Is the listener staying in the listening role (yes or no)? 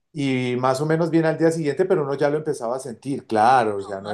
no